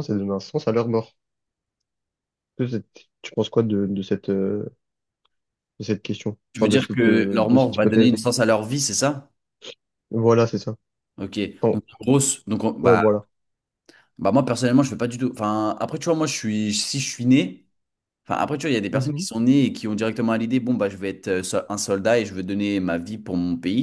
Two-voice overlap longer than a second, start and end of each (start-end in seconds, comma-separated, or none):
6.5-8.2